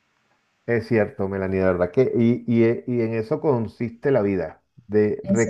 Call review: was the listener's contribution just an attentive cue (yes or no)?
yes